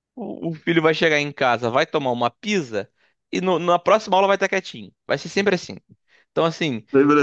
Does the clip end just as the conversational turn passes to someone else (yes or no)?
no